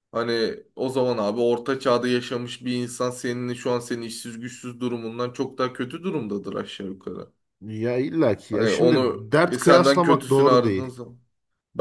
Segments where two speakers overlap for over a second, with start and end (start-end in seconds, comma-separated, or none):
8.5-10.9